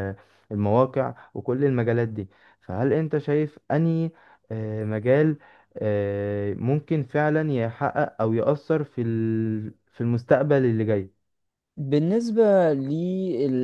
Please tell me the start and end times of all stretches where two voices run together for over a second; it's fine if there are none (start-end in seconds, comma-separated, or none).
none